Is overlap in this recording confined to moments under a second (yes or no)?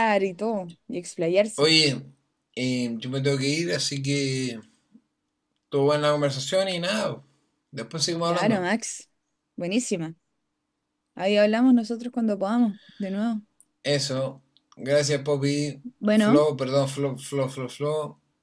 yes